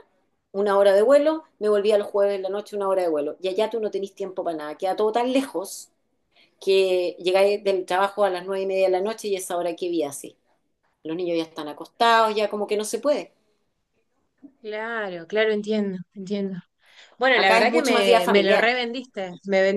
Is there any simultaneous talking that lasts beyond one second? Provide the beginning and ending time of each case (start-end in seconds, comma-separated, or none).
17.4-18.7